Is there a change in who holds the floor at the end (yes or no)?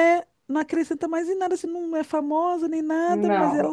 no